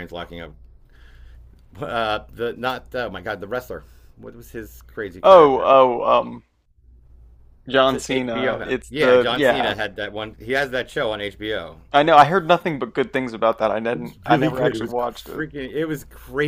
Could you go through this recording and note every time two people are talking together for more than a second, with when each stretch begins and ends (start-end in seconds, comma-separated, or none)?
7.8-9.8, 13.9-15.4